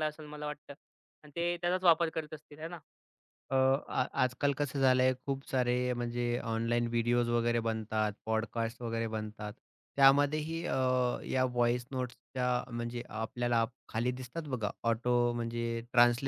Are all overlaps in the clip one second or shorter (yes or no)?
yes